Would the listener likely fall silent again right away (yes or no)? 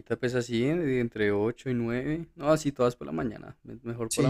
no